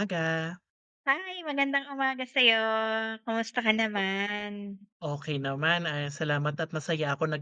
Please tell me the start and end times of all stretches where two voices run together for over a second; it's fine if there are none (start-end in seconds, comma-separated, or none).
none